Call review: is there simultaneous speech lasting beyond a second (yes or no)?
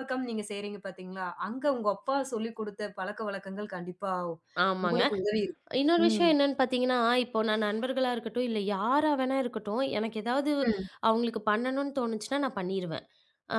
no